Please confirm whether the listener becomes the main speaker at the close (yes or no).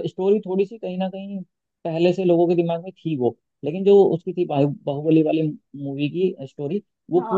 yes